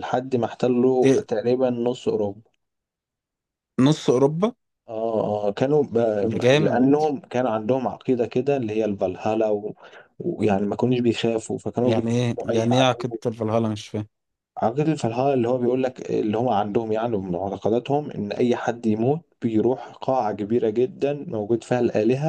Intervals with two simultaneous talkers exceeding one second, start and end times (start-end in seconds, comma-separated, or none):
11.8-13.2